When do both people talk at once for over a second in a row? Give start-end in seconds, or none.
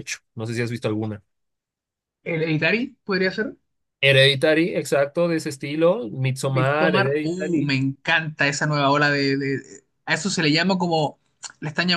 6.5-7.8